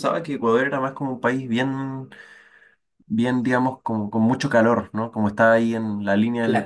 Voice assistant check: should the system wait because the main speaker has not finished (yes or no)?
no